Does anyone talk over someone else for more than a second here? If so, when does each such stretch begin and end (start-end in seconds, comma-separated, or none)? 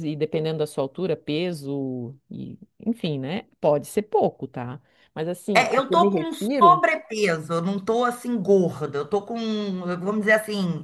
5.5-6.8